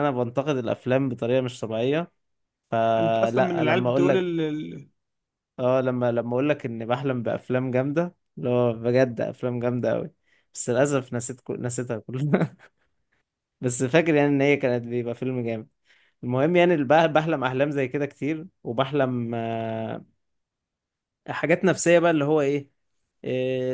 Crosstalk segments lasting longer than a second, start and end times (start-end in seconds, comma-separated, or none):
3.0-4.3